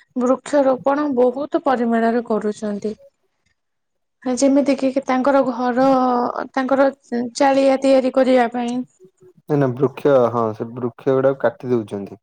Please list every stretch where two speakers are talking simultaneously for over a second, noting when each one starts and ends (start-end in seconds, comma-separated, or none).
none